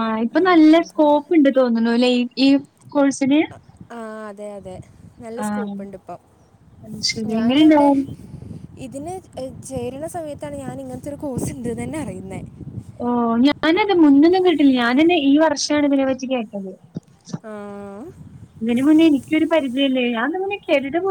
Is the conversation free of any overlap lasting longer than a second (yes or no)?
yes